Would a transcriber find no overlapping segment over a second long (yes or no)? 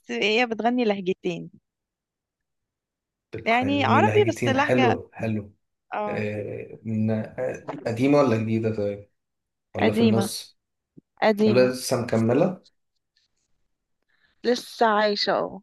no